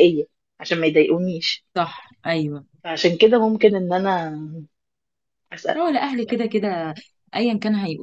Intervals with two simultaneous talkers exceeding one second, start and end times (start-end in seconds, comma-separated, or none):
none